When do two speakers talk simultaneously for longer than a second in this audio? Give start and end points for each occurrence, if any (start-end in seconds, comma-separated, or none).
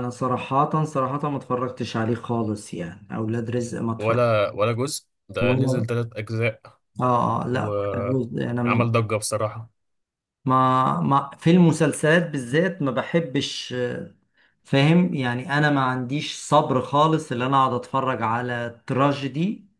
7.5-8.9